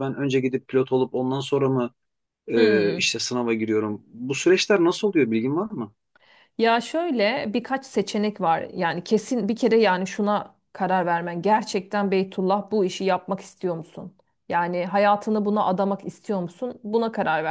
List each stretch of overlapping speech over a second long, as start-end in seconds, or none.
none